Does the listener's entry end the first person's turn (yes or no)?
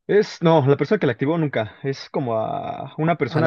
no